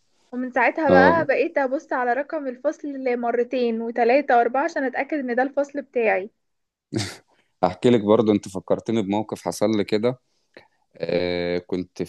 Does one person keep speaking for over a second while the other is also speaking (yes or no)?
no